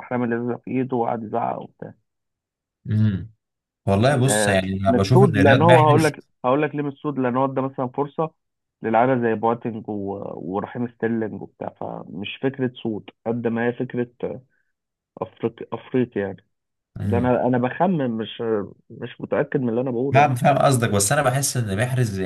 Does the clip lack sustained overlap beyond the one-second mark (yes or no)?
no